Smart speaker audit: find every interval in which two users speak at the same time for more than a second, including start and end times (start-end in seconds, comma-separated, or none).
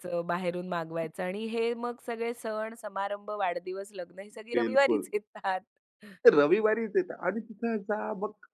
none